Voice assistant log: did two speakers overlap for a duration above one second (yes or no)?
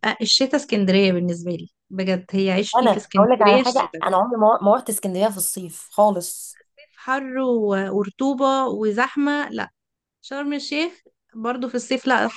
yes